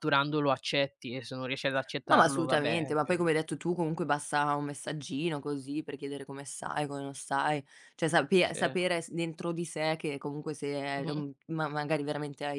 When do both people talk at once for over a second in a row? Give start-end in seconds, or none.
2.0-3.3